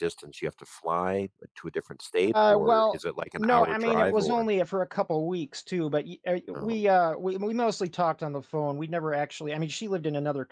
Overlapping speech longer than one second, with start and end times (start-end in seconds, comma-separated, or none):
2.3-4.5